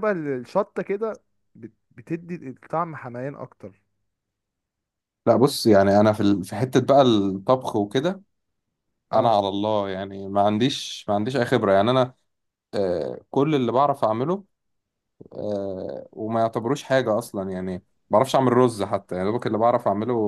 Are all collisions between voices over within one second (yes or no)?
yes